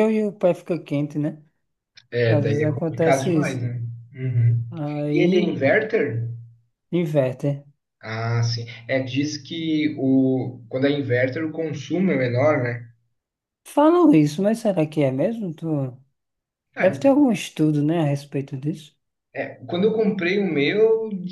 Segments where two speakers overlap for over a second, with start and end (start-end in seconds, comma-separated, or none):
2.3-3.6